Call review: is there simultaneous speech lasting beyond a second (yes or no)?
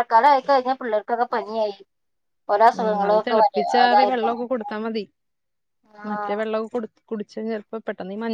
yes